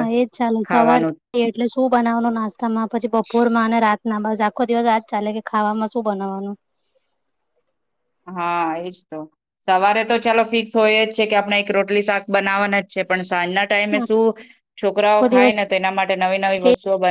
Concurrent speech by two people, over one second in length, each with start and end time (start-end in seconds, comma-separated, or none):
none